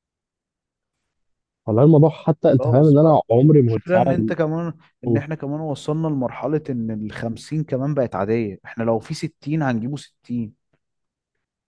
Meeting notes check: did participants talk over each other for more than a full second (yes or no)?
yes